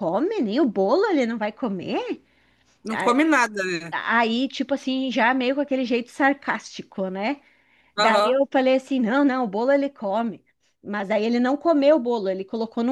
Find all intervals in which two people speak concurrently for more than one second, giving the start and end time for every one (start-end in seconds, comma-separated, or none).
none